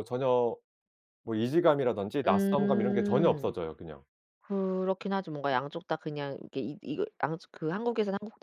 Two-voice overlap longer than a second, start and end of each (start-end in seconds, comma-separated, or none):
2.2-3.5